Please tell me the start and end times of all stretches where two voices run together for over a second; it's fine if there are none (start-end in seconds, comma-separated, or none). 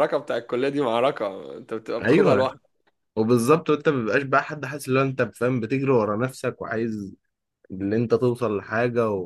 none